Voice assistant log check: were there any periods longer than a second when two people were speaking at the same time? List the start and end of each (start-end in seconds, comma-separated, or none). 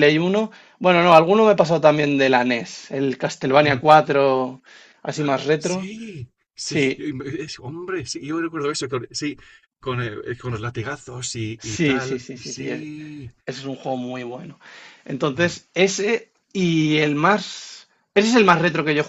11.6-12.9